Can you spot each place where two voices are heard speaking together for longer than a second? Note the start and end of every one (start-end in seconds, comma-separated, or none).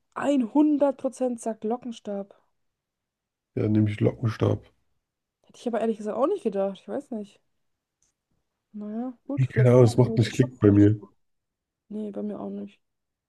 9.3-11.0